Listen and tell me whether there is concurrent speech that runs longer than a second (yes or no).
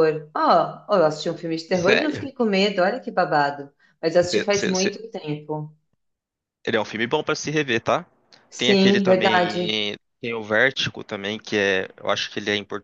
yes